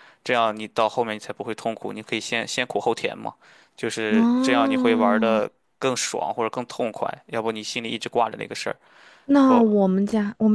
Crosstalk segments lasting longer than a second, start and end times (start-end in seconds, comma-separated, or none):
4.1-5.4